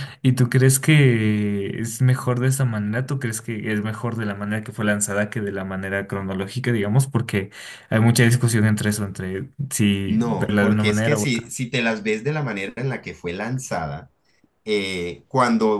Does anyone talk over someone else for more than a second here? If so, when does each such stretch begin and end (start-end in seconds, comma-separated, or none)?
10.0-11.5